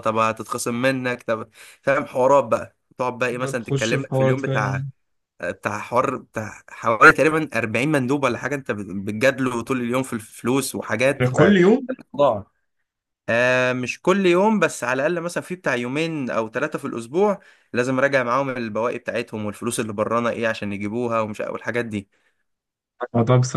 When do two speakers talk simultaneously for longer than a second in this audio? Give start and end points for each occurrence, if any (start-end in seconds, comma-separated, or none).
3.4-4.8